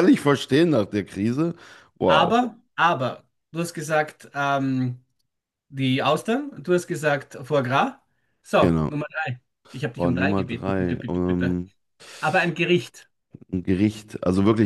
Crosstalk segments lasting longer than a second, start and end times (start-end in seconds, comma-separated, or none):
9.9-11.6